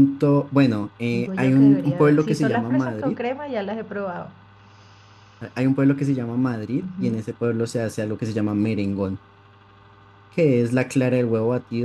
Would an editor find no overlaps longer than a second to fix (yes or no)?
no